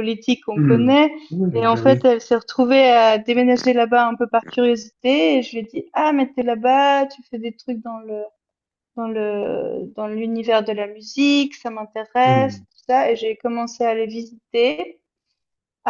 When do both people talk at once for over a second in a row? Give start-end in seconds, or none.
none